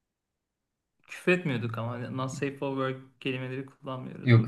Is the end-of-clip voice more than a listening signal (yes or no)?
yes